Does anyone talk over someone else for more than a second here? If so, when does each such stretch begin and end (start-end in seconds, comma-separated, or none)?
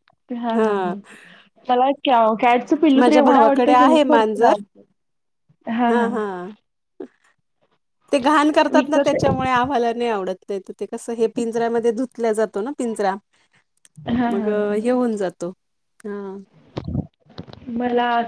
3.0-4.5